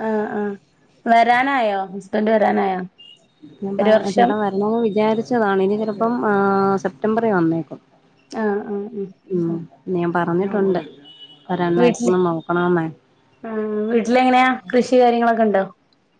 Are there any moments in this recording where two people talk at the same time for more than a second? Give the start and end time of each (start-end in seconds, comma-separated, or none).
none